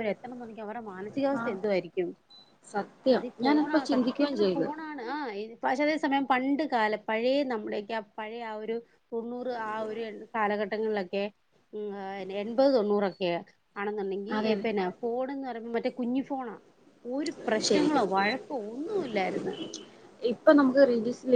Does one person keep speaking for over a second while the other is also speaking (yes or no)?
yes